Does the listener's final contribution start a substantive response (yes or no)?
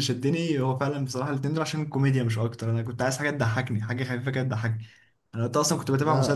no